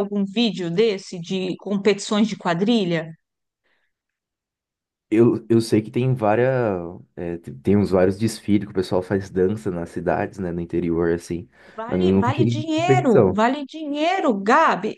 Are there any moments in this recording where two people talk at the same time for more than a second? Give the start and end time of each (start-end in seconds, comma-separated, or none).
11.9-13.4